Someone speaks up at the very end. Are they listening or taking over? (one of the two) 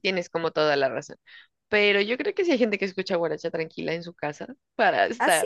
taking over